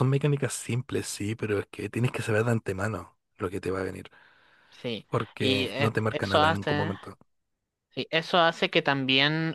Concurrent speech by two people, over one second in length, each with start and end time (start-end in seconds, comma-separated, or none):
5.1-6.9